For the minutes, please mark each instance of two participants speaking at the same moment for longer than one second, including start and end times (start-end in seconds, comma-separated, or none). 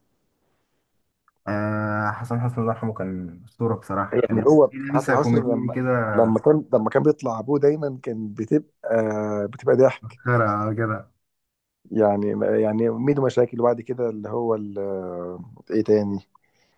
4.1-5.8